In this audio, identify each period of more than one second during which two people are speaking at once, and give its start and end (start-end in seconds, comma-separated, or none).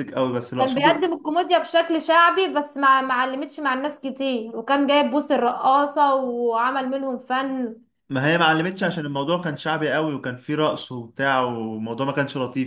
none